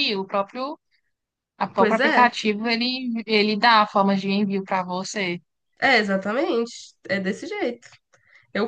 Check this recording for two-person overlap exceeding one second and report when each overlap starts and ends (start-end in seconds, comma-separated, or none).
none